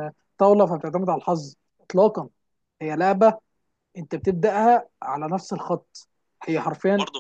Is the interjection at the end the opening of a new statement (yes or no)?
yes